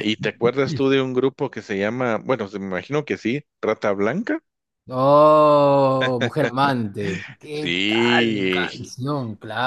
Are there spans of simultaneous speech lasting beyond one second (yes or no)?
yes